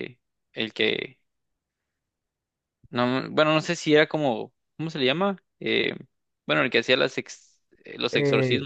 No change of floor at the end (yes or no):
no